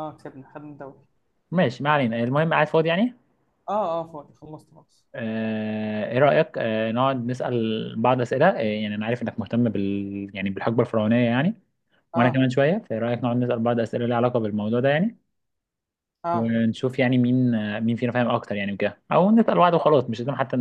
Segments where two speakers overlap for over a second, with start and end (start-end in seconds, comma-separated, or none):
none